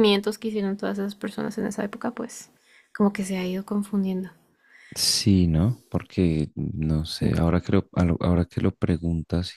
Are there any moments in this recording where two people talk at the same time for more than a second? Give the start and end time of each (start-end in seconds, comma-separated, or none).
none